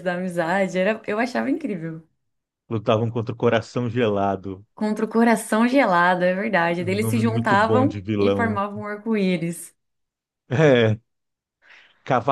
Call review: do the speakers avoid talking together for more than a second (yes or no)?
no